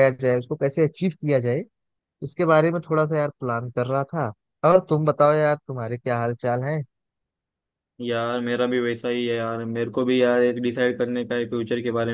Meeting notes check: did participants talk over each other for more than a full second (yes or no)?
no